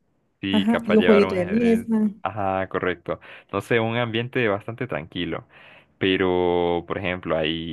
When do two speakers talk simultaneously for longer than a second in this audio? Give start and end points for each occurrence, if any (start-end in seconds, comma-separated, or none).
0.5-2.1